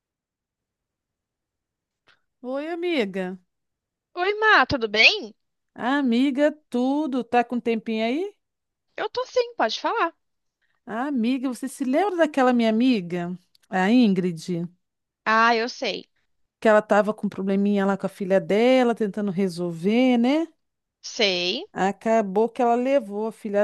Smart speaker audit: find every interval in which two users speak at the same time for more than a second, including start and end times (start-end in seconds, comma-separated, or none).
none